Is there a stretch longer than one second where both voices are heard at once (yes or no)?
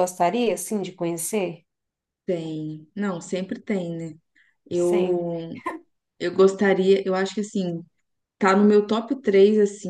no